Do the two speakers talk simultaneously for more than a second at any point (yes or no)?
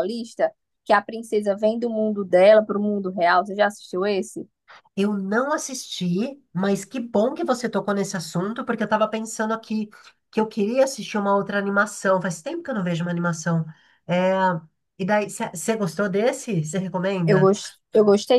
no